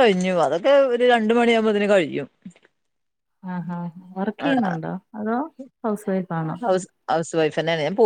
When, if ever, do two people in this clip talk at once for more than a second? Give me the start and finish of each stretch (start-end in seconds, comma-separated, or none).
none